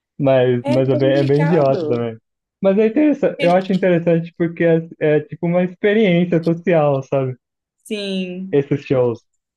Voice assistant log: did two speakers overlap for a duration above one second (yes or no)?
yes